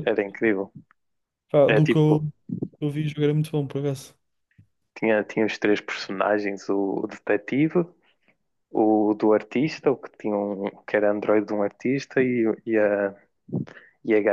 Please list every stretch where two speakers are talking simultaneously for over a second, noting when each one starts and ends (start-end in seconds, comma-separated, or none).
none